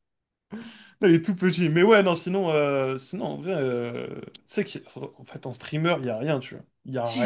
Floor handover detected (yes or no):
yes